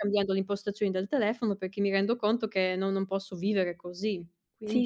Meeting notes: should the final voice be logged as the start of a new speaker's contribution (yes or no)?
yes